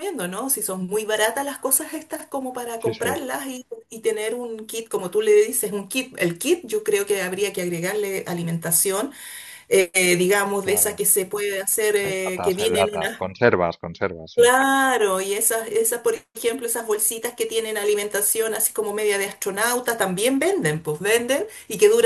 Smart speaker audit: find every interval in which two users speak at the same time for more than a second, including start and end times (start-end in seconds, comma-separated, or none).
12.0-13.2